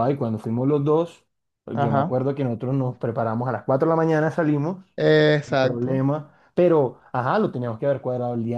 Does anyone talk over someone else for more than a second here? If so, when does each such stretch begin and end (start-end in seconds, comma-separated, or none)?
none